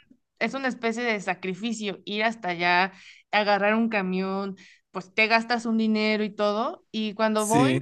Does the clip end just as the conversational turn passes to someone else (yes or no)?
no